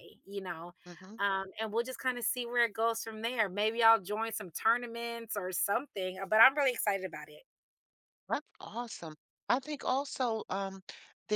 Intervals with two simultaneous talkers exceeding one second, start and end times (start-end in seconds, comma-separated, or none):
none